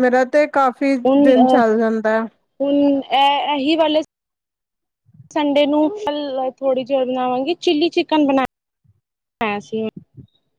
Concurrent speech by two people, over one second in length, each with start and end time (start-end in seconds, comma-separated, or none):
none